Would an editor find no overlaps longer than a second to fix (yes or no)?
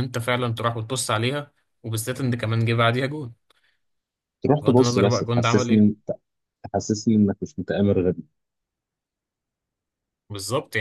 no